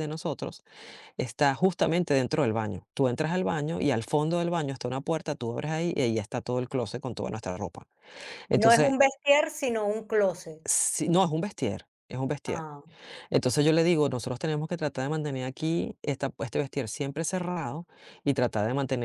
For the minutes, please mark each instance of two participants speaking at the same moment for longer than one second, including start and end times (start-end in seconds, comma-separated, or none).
none